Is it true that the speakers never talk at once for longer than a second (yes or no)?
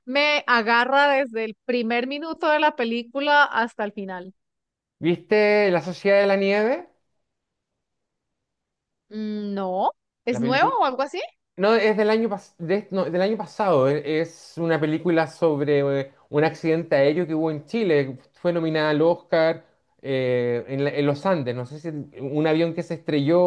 yes